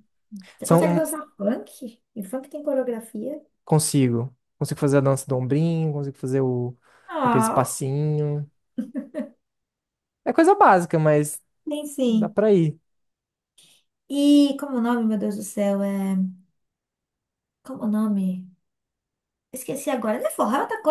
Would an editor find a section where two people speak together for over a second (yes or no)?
no